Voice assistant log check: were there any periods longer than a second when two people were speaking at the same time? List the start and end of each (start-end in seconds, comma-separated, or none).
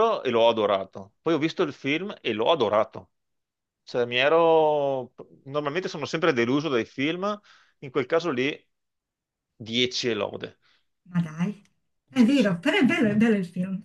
none